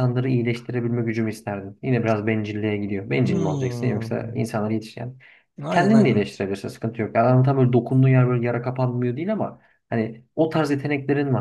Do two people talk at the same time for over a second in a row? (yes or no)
yes